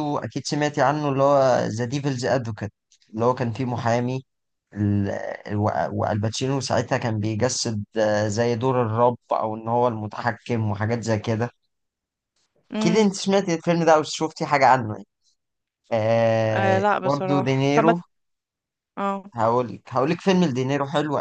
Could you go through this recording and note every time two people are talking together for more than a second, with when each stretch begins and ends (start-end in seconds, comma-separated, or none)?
16.5-18.0